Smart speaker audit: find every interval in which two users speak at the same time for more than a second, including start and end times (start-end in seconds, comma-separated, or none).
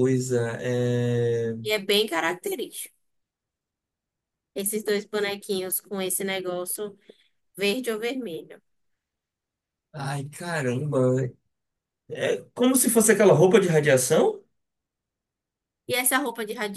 none